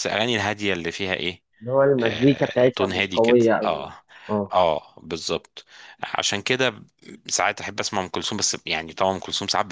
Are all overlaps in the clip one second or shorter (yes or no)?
no